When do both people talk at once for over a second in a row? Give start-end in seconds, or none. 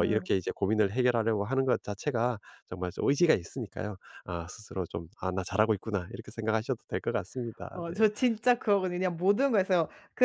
none